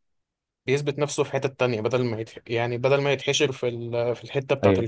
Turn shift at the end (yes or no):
yes